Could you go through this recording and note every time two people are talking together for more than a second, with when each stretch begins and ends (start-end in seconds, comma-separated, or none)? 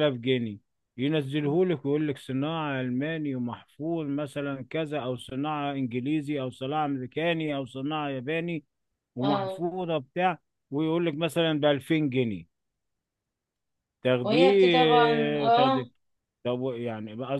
14.2-15.8